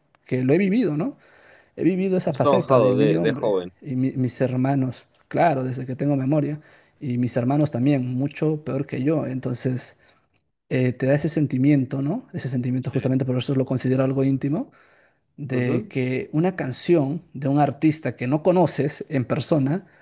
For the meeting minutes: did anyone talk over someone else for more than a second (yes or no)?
yes